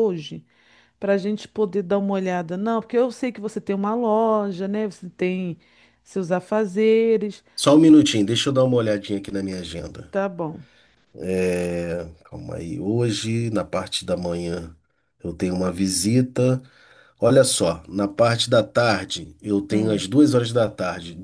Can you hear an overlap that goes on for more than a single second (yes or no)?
no